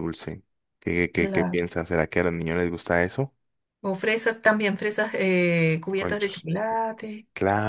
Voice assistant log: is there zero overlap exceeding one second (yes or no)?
yes